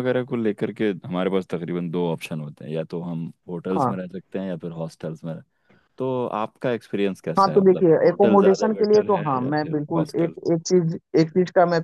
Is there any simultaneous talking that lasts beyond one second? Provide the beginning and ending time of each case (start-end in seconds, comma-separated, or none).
7.4-10.3